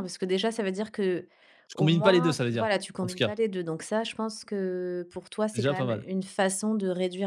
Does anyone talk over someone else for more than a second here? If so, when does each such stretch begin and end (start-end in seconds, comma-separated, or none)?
1.7-3.3